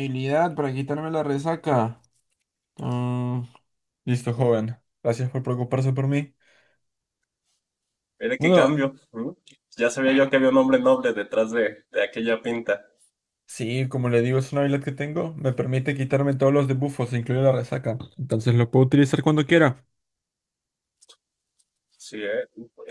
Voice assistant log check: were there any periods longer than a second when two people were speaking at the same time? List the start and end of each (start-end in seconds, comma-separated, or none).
none